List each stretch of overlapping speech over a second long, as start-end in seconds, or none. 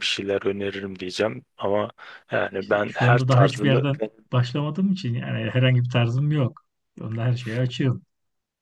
2.6-3.8